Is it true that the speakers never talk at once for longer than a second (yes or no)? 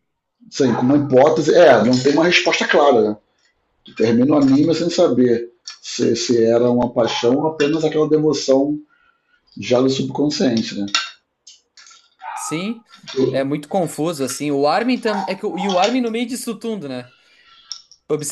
yes